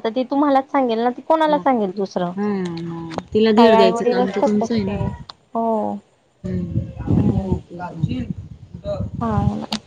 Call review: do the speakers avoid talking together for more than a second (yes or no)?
no